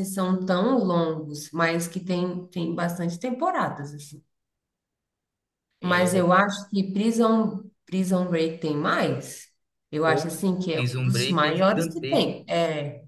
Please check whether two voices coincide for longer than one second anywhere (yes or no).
yes